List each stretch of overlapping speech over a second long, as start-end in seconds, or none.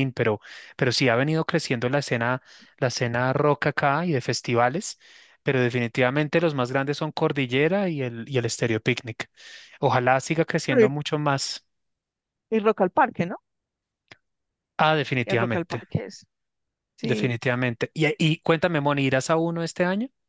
none